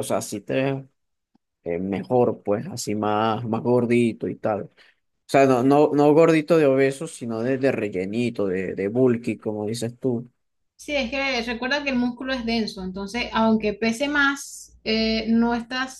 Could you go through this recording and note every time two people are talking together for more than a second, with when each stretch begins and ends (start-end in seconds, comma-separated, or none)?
none